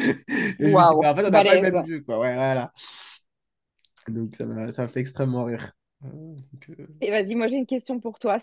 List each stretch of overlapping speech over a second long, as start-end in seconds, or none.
0.6-1.9